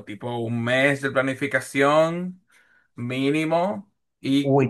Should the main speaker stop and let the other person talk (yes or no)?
yes